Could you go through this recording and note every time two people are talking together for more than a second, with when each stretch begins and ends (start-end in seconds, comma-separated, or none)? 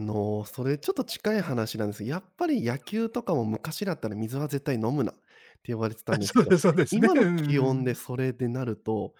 6.1-8.0